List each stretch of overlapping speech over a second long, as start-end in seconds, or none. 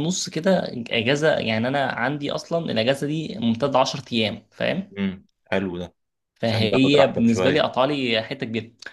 6.5-7.7